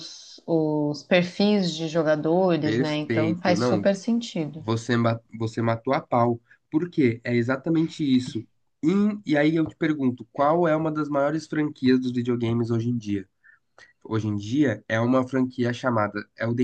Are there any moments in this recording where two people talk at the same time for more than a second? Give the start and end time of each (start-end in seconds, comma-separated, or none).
2.6-3.9